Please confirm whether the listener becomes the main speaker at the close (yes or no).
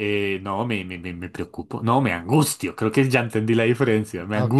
yes